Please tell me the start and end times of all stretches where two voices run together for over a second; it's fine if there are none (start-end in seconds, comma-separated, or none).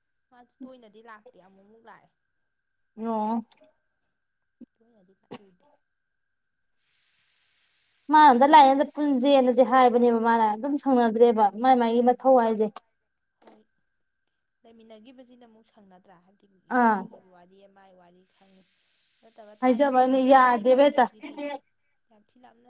19.6-21.1